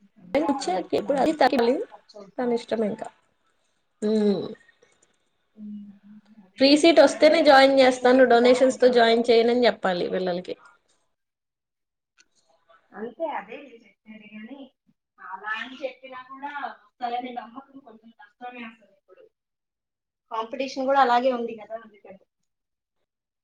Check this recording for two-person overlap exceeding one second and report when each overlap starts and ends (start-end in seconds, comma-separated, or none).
6.6-9.3